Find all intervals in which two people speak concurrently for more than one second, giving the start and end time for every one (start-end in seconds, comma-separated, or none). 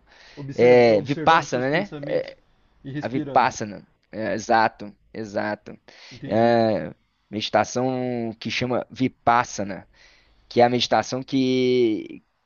0.5-1.9